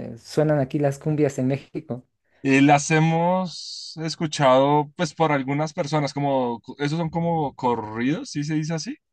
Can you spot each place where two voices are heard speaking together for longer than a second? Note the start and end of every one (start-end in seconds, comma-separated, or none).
none